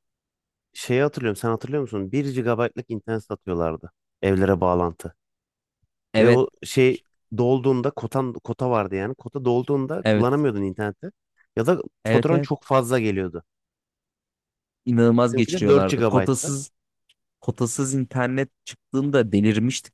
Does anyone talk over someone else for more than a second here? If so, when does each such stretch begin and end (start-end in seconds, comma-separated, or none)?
15.3-16.6